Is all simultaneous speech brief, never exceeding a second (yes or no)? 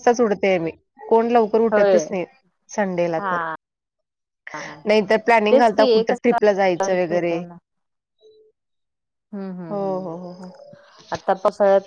no